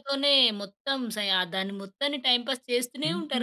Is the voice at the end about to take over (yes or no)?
yes